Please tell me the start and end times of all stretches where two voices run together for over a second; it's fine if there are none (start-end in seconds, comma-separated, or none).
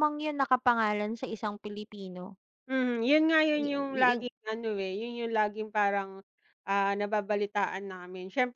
none